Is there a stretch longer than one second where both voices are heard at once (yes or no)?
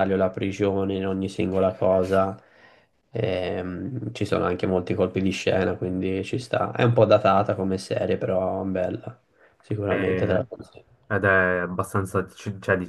no